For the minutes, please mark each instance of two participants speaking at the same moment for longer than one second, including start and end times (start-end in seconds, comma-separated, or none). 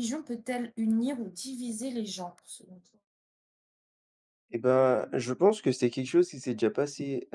none